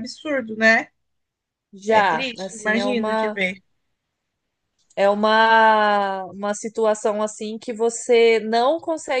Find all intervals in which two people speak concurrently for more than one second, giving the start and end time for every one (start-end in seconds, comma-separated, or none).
1.9-3.4